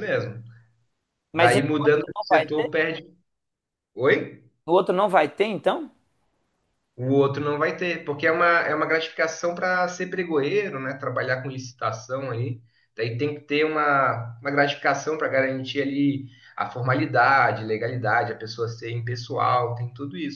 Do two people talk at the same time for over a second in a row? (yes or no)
yes